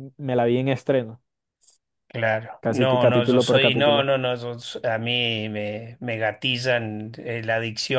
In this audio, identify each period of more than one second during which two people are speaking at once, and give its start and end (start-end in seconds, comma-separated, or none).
2.6-4.1